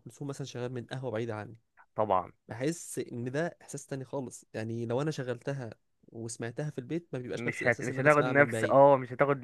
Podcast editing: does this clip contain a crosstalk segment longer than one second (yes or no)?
yes